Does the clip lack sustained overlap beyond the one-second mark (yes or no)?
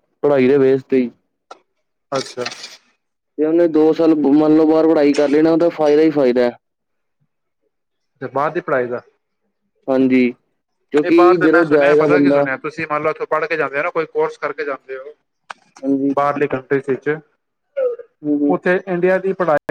no